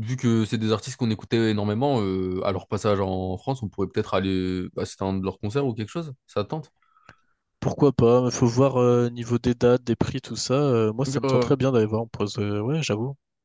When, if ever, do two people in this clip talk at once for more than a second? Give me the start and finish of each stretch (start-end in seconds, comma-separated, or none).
none